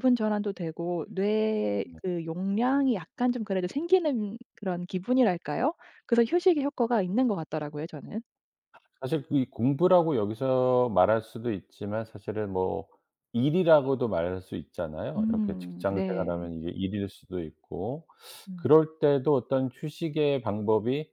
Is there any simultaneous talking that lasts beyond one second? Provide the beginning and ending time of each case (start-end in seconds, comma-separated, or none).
15.2-16.5